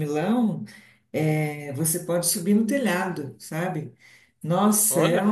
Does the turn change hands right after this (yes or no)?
no